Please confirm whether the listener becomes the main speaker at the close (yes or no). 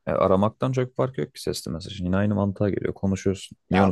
yes